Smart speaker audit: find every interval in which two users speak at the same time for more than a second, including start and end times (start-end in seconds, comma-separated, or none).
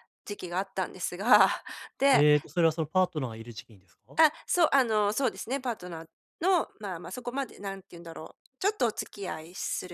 none